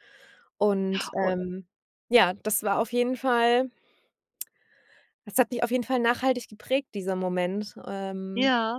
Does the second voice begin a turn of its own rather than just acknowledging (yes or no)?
yes